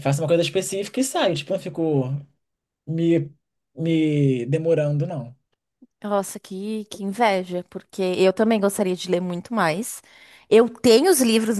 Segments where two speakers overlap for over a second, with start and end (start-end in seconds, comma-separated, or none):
none